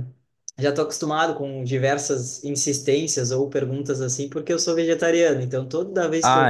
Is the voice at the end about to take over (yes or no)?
no